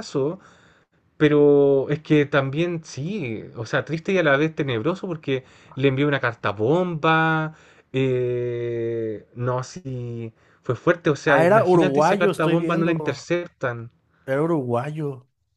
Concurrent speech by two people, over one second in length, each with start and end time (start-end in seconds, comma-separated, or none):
11.2-12.9